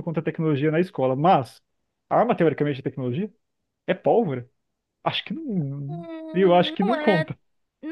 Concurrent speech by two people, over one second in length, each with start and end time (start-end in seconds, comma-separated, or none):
5.9-7.3